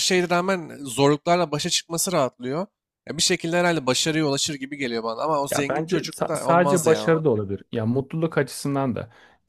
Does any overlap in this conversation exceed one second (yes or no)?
yes